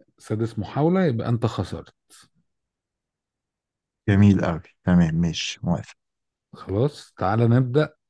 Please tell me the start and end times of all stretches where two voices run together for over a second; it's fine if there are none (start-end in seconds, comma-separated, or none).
none